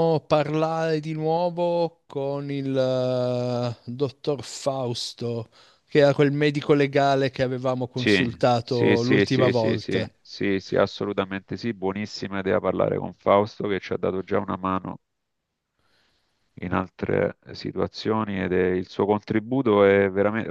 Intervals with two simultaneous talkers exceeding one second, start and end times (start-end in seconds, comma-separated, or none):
7.9-10.1